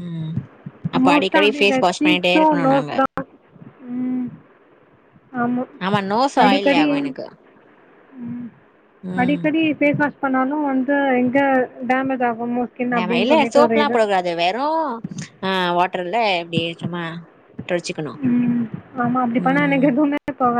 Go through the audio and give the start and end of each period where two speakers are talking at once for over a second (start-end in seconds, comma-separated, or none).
1.1-2.9